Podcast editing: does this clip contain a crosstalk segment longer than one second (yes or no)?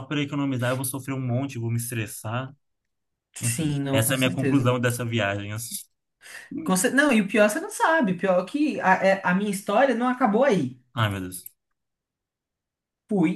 yes